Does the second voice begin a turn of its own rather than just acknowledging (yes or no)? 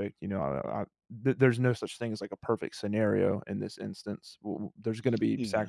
no